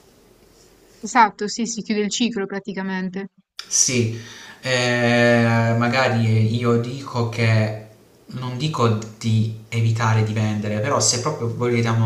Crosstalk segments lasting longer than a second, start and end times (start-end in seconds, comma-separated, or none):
none